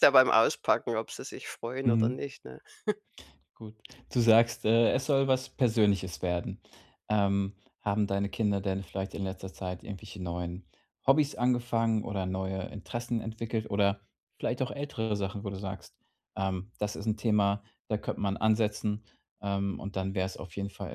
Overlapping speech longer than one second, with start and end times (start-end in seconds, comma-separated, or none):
none